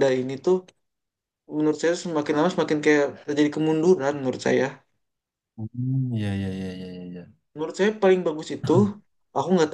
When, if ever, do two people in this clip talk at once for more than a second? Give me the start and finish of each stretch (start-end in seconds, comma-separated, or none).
none